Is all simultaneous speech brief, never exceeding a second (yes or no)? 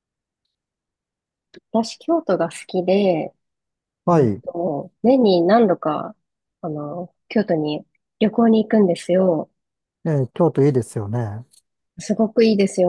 yes